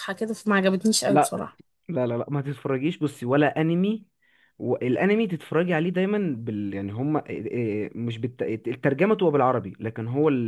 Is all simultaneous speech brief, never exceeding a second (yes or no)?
yes